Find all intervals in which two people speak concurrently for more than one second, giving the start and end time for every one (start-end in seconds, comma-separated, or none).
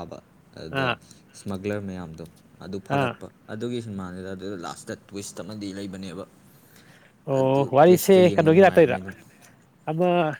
7.4-9.0